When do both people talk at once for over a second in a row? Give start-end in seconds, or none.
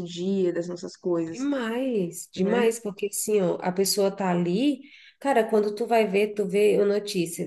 none